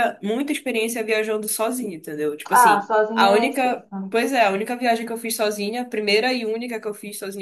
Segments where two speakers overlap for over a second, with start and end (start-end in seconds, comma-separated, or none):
2.5-4.1